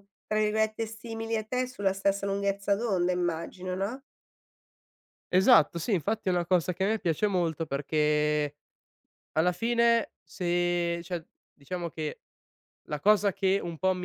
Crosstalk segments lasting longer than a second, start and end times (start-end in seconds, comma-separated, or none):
none